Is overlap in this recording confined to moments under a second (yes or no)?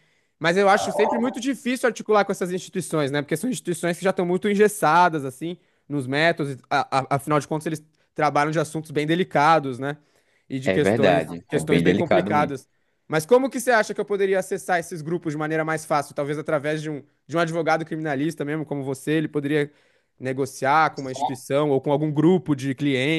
no